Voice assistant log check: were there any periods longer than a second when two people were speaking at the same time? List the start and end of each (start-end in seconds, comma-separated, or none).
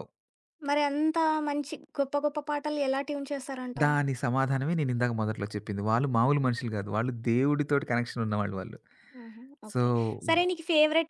none